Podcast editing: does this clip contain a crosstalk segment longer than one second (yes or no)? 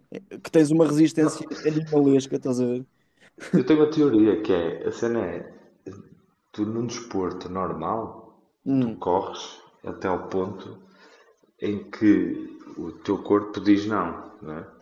no